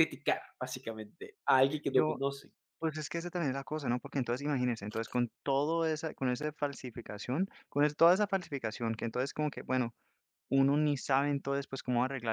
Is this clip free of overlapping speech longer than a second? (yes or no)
yes